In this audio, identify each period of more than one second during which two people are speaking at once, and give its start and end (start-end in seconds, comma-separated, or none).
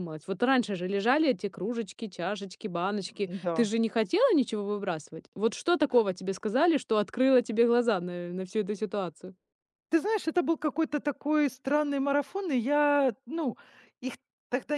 none